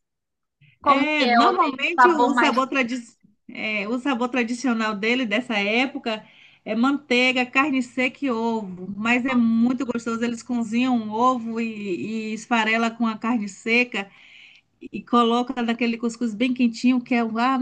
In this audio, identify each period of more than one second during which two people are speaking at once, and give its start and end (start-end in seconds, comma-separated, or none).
0.8-2.6